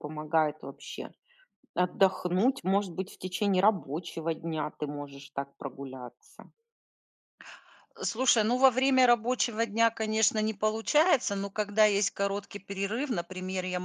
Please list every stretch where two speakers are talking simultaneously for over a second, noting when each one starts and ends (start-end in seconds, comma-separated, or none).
none